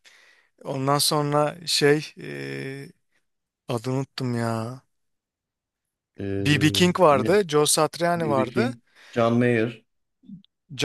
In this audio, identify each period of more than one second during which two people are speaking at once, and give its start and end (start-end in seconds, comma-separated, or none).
none